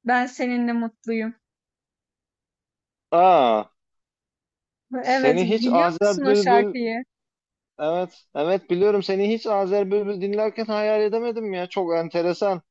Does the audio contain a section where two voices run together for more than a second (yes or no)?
yes